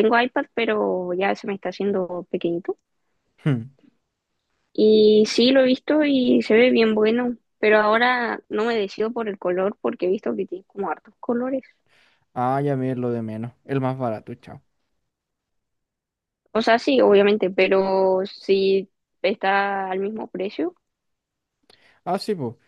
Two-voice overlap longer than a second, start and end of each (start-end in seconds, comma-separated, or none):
none